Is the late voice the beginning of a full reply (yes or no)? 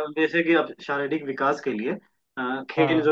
no